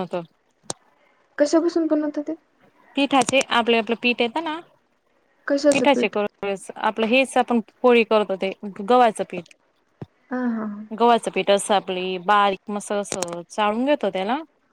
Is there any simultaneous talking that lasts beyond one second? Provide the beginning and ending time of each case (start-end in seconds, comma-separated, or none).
none